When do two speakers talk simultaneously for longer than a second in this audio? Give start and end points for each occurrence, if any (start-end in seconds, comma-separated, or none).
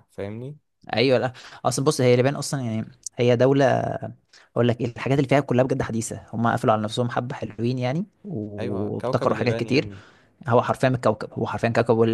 8.6-9.9